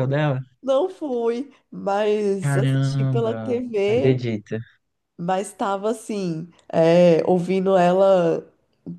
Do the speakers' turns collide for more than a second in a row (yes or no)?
yes